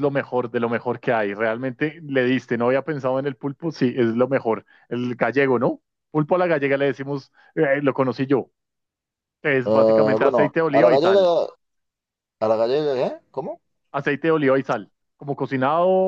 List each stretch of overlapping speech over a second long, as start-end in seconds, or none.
9.6-11.3